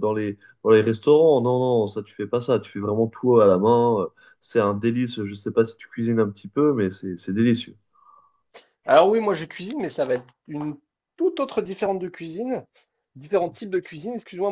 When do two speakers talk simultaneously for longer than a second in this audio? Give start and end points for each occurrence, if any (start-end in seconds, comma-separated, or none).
none